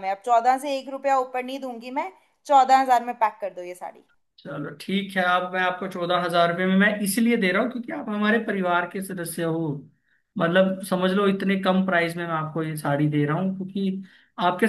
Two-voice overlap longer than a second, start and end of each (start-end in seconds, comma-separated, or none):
none